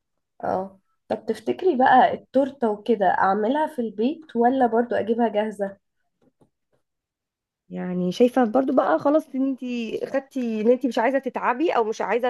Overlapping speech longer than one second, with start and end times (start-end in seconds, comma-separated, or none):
none